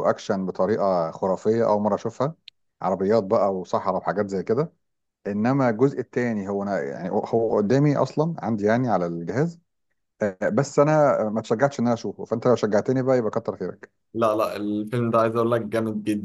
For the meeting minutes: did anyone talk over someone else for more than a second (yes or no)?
no